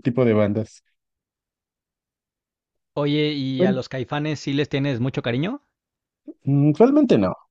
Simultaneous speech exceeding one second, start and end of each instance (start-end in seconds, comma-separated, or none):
none